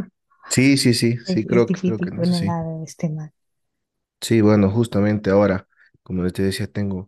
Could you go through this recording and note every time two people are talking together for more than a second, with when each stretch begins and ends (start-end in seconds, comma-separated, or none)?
1.2-2.6